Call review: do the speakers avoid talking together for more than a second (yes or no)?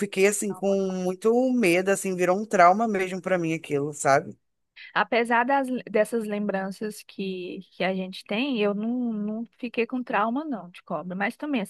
yes